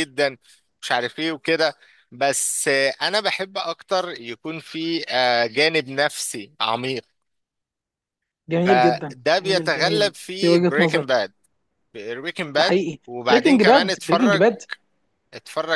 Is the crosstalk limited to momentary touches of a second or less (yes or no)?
no